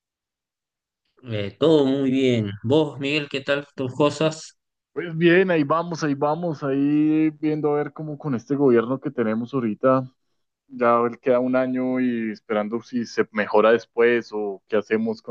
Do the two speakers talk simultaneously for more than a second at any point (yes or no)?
no